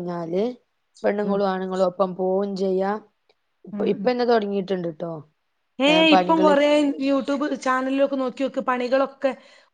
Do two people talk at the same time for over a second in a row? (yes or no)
no